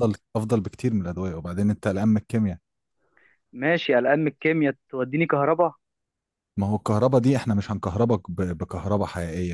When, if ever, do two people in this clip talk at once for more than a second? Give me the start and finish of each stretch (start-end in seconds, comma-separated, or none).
none